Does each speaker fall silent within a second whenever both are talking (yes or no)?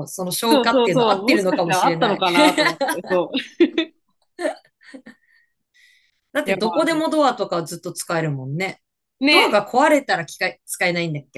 no